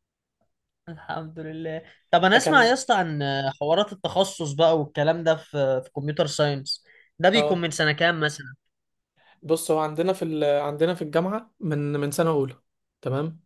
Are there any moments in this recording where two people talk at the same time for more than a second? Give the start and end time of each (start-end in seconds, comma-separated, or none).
none